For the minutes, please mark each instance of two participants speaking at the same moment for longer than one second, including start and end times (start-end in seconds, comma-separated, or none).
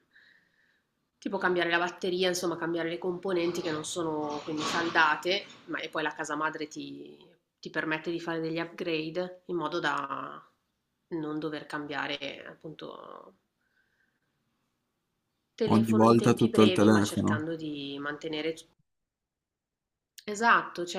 15.7-17.4